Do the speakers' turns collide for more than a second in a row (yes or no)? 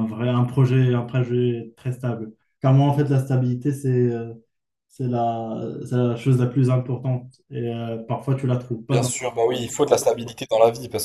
no